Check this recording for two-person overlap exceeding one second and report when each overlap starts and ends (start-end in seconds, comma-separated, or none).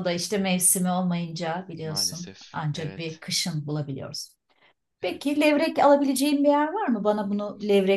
1.8-3.2